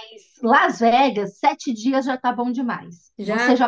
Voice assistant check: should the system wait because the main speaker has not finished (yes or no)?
yes